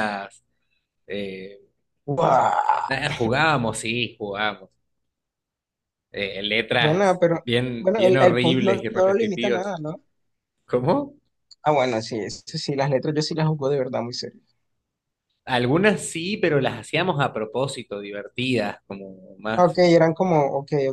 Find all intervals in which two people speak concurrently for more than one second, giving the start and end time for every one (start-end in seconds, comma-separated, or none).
6.8-9.6